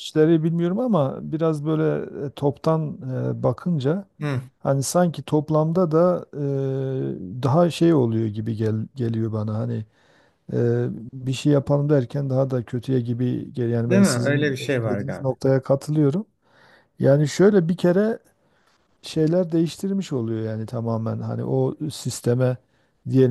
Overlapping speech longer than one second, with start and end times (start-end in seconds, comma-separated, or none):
13.9-15.3